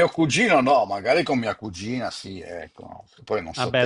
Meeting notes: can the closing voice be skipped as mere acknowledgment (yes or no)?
no